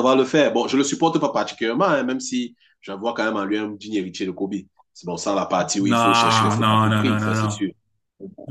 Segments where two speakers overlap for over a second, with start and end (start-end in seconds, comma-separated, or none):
5.9-7.7